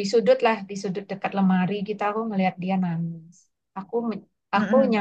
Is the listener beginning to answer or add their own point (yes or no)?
no